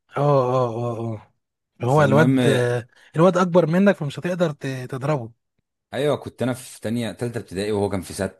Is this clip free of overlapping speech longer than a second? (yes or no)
yes